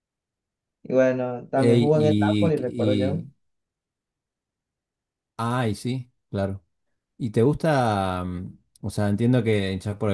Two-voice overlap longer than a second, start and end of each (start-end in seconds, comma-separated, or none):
1.6-3.2